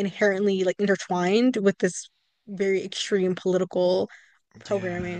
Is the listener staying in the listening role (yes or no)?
no